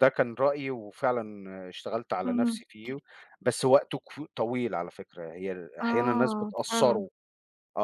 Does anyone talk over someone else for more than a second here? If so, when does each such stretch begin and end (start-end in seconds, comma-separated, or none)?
5.8-7.1